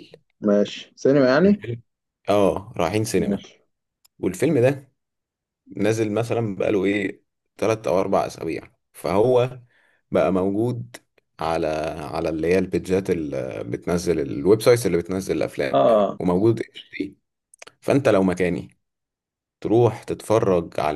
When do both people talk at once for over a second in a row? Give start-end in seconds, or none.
none